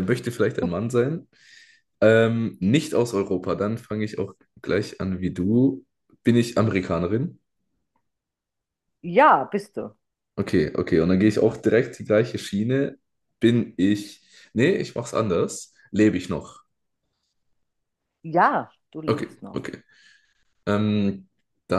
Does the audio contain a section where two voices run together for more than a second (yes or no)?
no